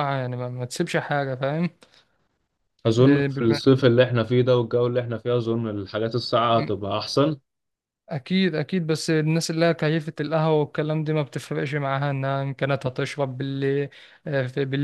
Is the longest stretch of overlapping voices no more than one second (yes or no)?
yes